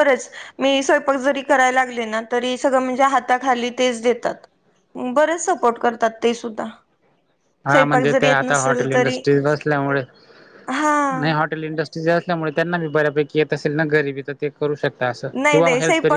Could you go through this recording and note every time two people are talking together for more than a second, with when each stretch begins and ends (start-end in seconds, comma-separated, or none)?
7.7-9.2